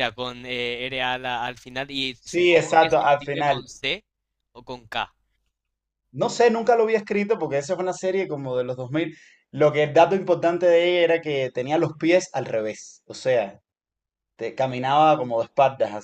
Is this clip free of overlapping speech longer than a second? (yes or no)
no